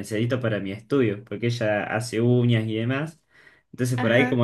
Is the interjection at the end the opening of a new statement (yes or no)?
no